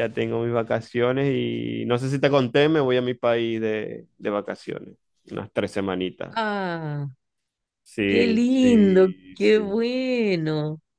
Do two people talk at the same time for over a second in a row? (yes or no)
yes